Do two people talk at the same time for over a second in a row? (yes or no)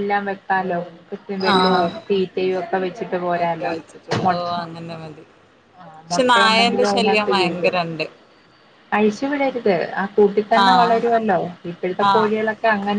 yes